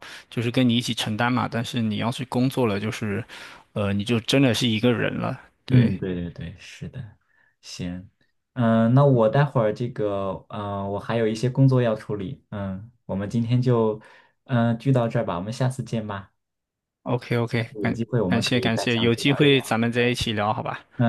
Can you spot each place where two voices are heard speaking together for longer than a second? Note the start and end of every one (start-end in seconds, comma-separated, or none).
17.8-19.8